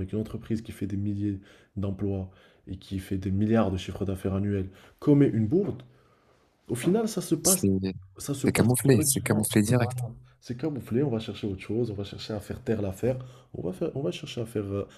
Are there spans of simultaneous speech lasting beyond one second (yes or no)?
yes